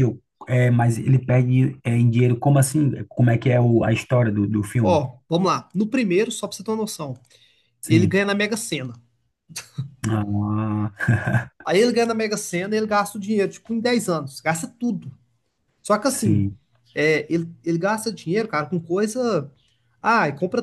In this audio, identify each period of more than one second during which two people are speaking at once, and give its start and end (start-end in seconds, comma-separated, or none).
none